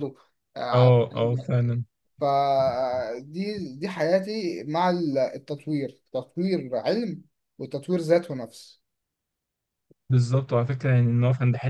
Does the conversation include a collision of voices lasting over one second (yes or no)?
no